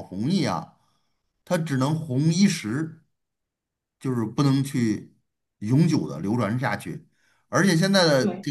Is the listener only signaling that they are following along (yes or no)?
yes